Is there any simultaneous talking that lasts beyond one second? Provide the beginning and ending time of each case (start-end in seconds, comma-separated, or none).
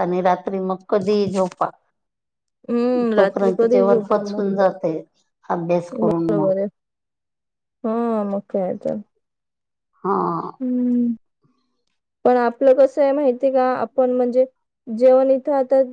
3.2-4.4